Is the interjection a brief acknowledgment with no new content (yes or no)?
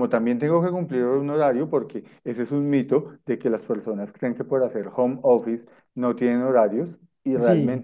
yes